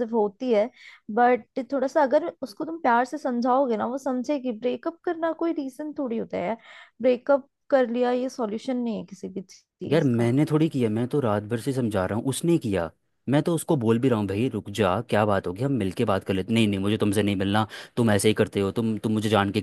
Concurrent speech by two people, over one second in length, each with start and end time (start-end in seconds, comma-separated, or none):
none